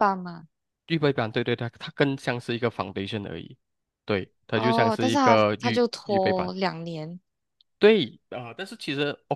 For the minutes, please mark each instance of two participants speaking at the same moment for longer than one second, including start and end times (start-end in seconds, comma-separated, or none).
4.5-6.5